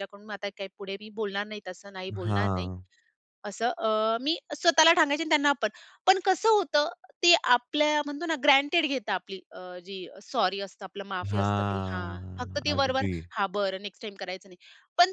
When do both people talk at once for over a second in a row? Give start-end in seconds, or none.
11.3-13.1